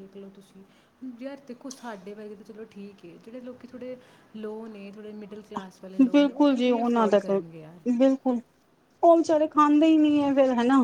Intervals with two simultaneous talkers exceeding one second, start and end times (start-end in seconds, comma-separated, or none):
6.1-7.8